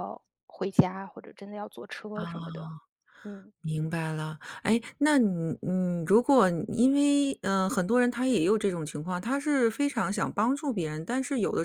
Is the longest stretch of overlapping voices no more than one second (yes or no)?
yes